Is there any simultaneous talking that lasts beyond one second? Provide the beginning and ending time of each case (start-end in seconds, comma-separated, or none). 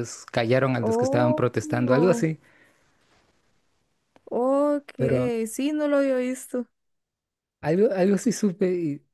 0.8-2.2